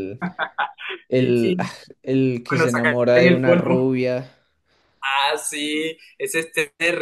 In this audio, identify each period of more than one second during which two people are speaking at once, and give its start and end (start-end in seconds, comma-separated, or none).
2.5-4.0